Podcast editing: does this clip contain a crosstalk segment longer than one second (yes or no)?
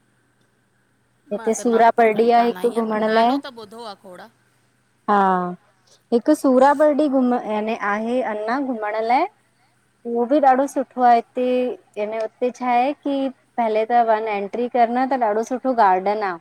yes